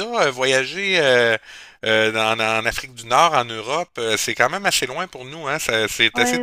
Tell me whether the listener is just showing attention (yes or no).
no